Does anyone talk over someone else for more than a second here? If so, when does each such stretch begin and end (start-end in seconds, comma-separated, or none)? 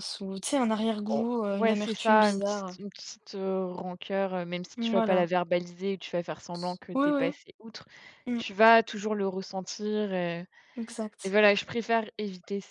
1.1-2.8